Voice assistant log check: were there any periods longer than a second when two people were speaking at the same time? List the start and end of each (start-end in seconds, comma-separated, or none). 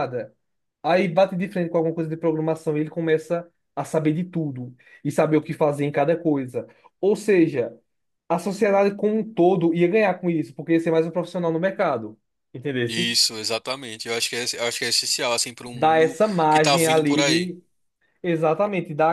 15.7-17.5